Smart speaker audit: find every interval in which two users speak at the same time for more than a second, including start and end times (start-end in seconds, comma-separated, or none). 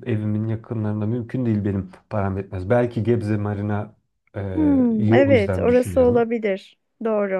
4.5-6.3